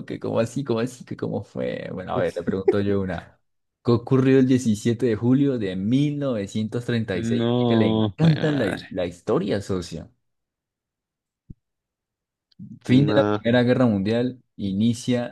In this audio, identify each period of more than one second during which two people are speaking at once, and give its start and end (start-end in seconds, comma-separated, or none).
7.1-8.8